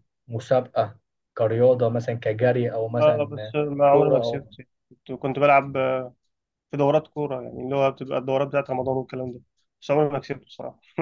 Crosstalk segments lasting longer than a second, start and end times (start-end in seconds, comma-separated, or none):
3.0-4.5